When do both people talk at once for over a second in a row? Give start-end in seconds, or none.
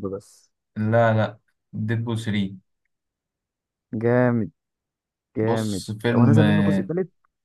5.4-6.9